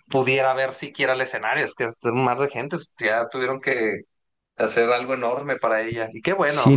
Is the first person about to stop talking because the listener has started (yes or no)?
yes